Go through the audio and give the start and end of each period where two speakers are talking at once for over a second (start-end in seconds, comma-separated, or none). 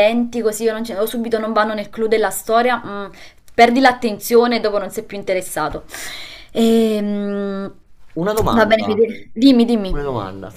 none